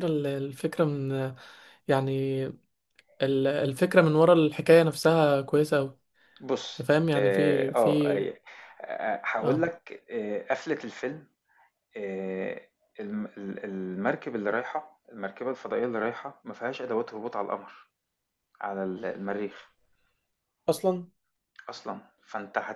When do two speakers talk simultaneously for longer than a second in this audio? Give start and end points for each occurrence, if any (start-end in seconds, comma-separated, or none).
6.7-8.2